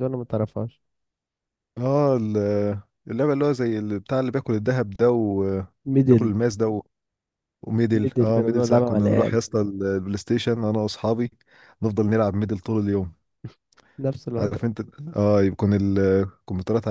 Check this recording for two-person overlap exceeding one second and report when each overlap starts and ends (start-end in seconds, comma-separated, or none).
7.9-9.4